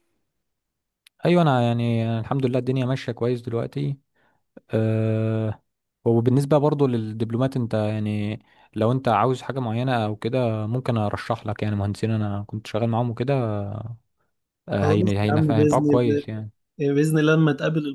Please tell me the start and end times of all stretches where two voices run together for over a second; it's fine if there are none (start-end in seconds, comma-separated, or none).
14.7-16.2